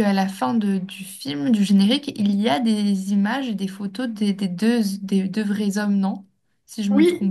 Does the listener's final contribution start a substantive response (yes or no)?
yes